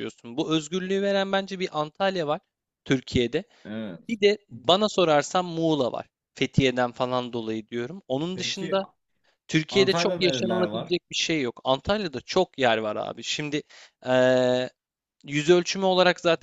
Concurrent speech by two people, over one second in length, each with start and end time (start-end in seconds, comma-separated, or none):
9.7-10.9